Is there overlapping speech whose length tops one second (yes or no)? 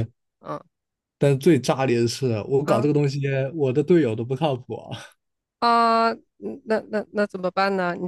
no